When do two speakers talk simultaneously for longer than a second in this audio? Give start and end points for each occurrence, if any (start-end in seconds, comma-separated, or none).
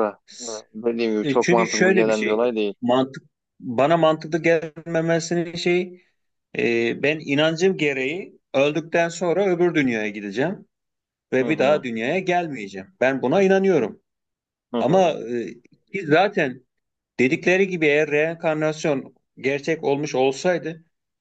1.2-2.7